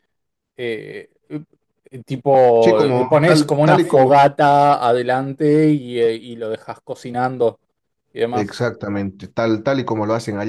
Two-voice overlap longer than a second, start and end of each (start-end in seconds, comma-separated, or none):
2.6-4.2